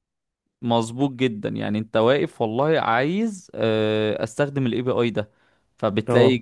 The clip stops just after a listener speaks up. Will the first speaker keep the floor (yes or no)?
yes